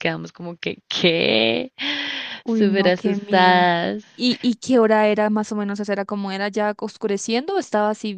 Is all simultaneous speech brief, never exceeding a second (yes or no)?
no